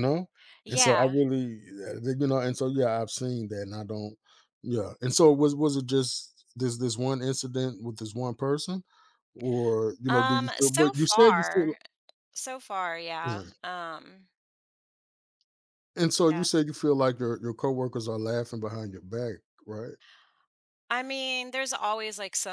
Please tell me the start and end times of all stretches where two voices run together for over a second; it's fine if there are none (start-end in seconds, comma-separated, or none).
10.1-11.7